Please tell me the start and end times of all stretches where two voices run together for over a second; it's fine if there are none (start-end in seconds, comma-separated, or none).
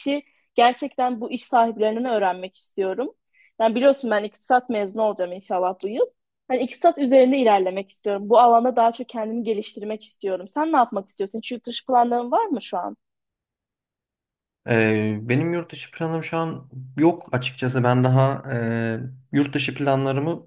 none